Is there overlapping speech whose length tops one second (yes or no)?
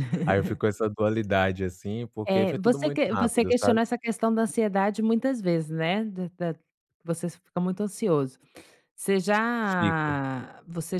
yes